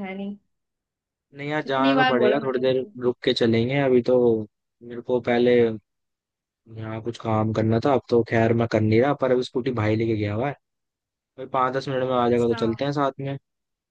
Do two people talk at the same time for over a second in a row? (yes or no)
yes